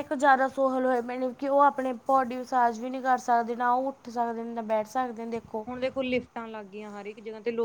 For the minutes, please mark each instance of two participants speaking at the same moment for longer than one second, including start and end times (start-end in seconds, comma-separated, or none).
none